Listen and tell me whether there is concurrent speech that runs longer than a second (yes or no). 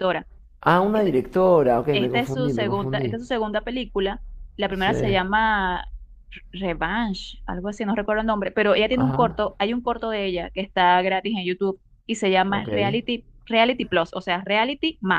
yes